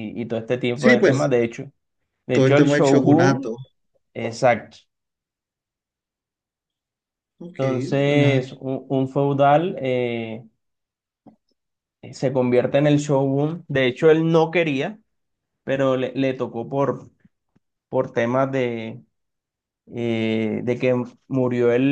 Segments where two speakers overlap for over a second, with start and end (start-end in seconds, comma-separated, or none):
2.3-3.5